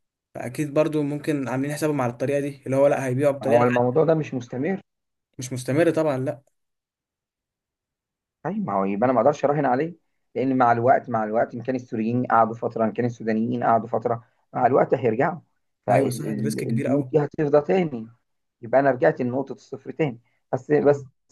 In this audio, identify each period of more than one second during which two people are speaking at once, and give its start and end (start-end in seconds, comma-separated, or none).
15.9-17.1